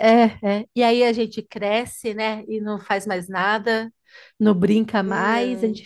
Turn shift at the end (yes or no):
no